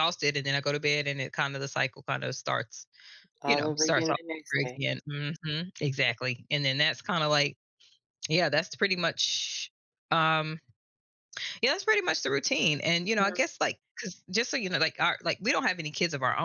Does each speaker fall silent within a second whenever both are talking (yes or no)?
no